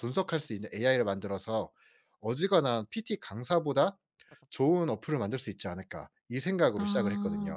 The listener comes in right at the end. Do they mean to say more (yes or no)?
yes